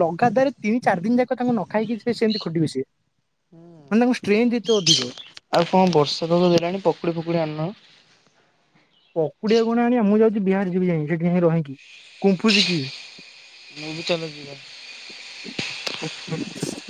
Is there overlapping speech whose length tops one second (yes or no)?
no